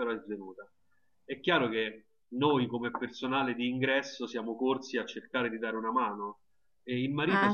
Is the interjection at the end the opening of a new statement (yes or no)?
no